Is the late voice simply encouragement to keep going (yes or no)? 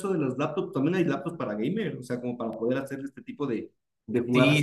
no